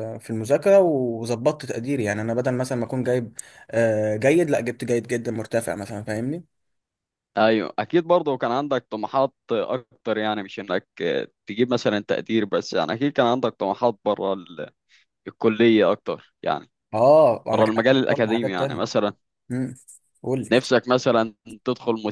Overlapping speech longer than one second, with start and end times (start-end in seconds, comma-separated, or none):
17.5-18.8